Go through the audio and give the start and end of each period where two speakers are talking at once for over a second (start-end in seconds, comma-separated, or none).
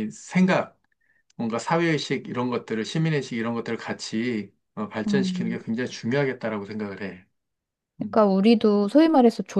none